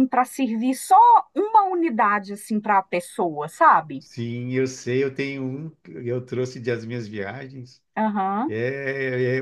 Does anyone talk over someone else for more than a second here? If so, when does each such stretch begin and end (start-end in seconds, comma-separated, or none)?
none